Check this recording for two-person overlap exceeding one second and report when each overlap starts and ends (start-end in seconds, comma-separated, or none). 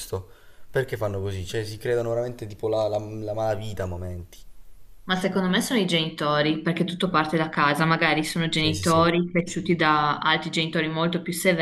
none